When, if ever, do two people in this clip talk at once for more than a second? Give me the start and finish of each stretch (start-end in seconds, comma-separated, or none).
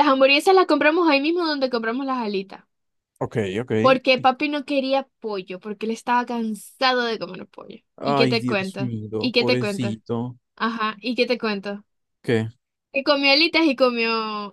8.0-10.0